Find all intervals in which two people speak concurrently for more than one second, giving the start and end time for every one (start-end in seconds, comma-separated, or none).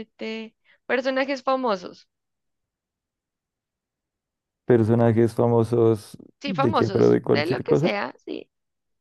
6.4-7.9